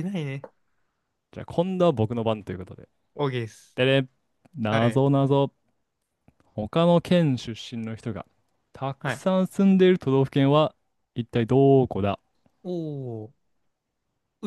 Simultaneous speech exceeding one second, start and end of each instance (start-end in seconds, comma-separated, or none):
none